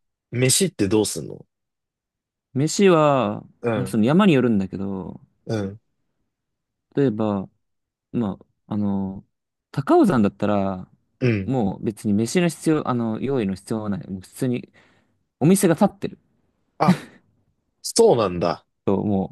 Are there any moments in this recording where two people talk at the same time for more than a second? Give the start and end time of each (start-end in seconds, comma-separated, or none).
none